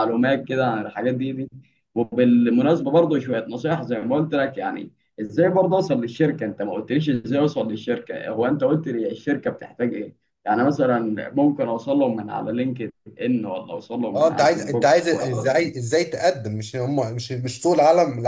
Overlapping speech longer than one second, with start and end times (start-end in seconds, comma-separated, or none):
14.1-15.5